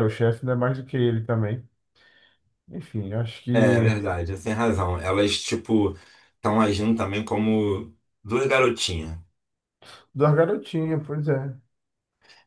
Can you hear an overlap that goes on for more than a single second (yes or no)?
no